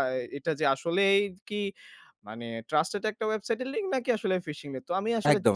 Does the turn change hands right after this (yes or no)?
no